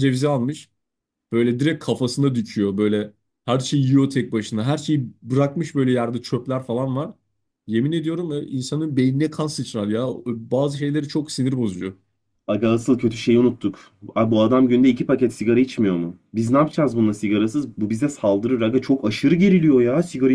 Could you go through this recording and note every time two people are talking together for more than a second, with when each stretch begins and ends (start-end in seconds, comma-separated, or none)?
none